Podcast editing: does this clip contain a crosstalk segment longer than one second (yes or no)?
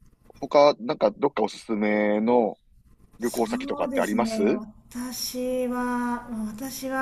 yes